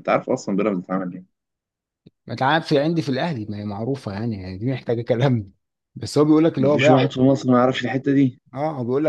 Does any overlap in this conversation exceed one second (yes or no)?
no